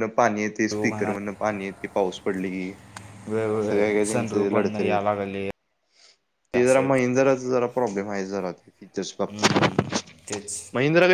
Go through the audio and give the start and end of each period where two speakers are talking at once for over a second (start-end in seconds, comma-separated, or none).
3.5-5.0